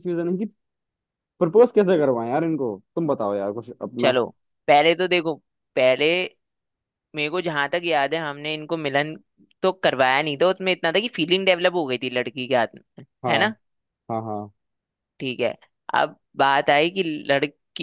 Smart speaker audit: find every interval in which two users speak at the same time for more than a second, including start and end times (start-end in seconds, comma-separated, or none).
none